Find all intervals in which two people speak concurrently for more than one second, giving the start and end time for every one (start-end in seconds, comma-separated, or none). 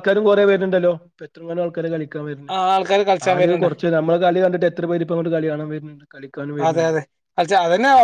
none